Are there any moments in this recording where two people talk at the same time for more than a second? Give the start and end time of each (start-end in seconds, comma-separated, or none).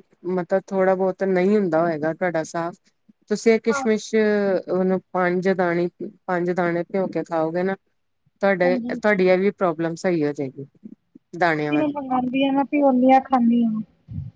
none